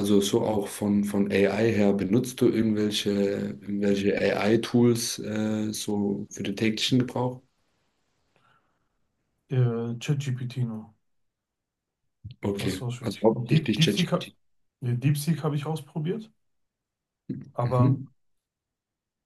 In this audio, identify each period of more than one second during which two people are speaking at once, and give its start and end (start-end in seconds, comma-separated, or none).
12.6-14.3